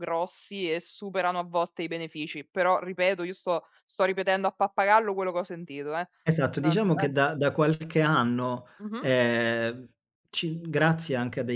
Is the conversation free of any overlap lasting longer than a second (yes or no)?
yes